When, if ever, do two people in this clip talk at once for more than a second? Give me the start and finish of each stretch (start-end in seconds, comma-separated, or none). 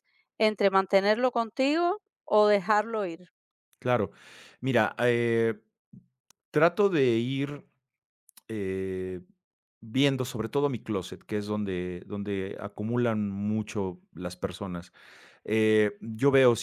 none